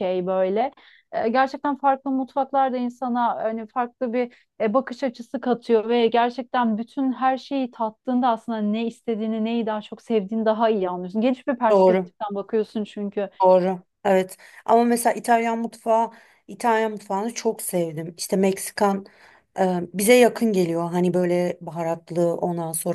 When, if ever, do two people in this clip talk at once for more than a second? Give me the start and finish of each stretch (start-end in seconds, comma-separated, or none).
none